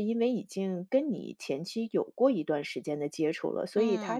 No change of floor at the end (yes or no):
yes